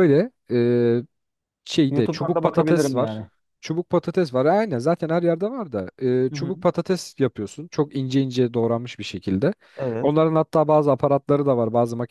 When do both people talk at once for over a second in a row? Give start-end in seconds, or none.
1.9-3.2